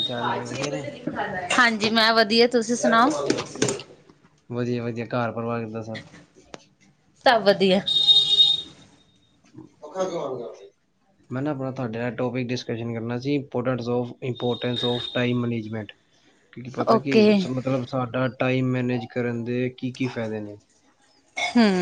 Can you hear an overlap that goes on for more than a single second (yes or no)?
no